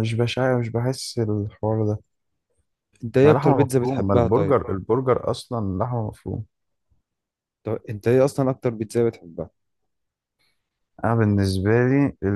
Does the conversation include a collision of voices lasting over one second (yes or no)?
yes